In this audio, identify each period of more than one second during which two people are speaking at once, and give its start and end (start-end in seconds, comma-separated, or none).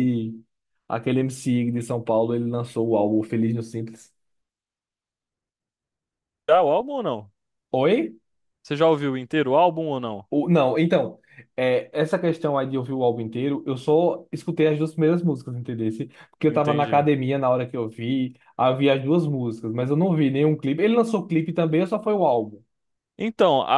none